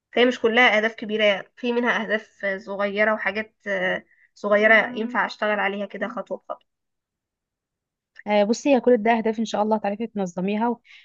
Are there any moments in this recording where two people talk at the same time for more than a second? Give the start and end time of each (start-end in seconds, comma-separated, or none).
none